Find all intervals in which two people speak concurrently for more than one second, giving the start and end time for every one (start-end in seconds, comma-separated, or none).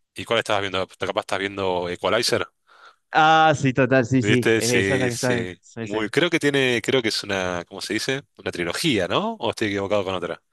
4.2-6.0